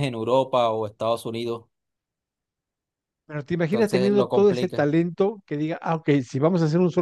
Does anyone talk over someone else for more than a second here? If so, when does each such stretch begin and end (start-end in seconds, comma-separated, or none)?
3.7-4.9